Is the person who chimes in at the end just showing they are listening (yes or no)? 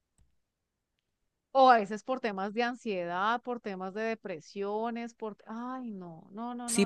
no